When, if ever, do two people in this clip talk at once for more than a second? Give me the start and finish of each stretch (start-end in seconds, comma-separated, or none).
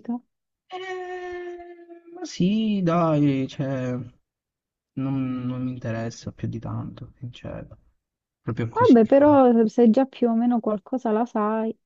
none